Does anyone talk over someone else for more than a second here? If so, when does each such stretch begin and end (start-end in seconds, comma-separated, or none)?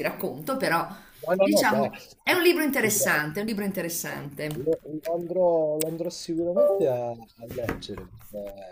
none